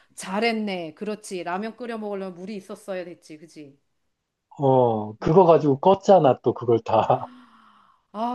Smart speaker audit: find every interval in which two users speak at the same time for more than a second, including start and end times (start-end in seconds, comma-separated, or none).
none